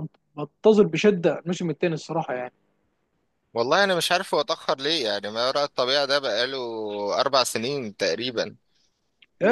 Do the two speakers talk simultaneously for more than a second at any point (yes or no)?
no